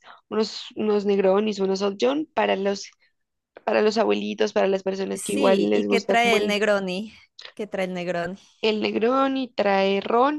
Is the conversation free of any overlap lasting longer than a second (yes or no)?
no